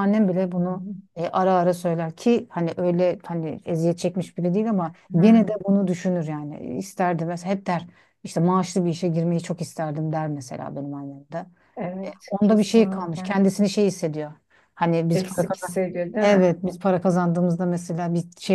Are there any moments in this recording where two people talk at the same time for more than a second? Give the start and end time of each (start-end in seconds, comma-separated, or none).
12.1-13.4